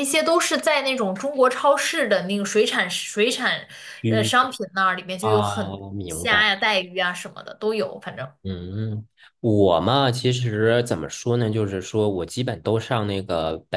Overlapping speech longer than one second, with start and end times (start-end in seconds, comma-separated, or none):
5.2-6.5